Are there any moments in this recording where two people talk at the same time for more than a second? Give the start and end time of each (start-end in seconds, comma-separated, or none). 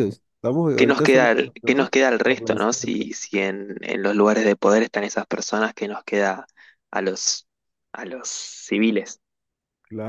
0.8-3.0